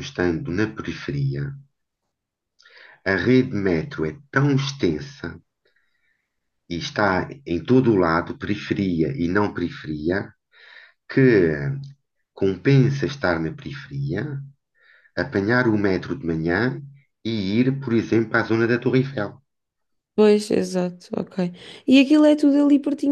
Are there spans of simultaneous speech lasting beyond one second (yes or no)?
no